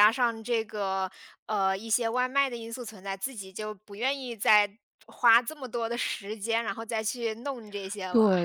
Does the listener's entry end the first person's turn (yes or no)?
yes